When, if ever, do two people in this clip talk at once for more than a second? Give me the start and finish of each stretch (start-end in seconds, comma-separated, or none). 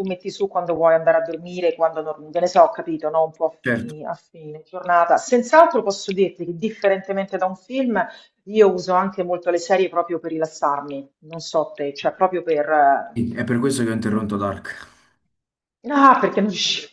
none